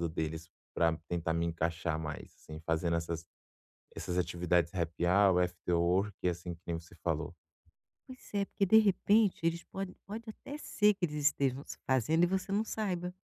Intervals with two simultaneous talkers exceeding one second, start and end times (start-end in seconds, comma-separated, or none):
none